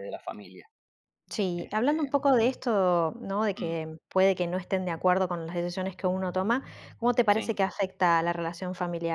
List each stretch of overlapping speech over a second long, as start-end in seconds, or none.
none